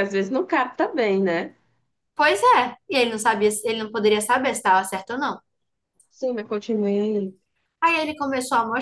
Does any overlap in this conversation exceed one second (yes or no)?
no